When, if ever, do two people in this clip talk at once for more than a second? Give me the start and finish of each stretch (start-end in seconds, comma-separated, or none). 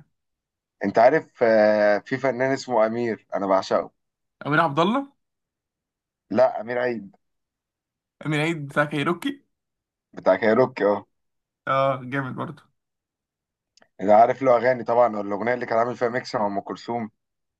none